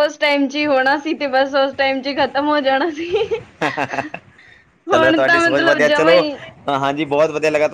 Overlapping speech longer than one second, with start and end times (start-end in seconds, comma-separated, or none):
4.9-6.1